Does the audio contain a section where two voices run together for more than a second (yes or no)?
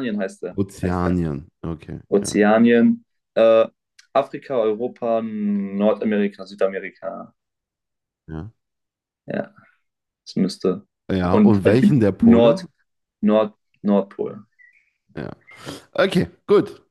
yes